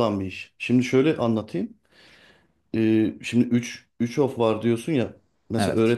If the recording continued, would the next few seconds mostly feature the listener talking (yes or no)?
no